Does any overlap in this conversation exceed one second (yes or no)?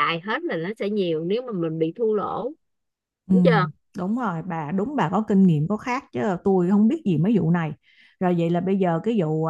no